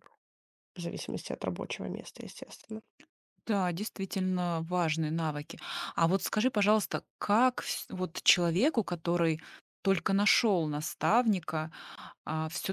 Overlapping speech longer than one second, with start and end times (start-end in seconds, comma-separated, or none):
none